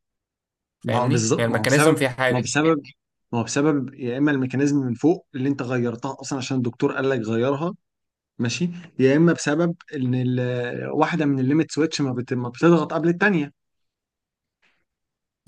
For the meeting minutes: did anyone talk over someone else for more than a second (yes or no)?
yes